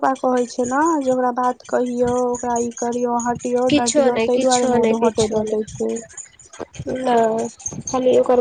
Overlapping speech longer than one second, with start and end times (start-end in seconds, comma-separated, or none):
3.7-5.8